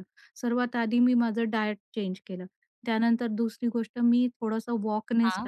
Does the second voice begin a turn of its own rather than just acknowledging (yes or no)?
no